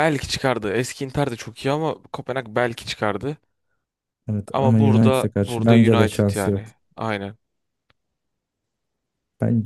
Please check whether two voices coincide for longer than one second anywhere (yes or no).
yes